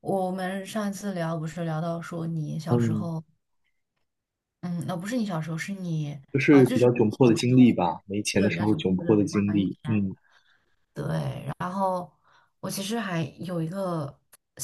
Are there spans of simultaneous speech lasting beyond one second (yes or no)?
yes